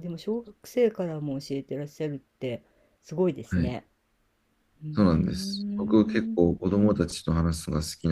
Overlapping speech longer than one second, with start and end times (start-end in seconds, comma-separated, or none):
4.9-6.4